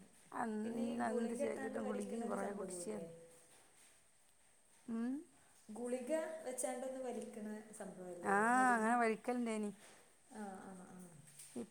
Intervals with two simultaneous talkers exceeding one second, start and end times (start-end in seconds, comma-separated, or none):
0.6-3.1